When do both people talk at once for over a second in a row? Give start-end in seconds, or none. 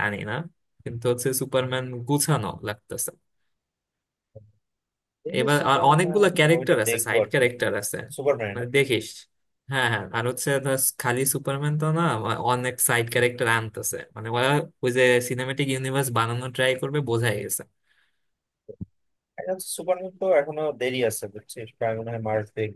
5.4-7.5